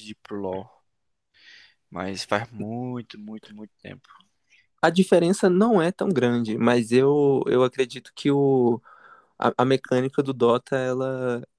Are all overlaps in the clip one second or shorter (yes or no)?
yes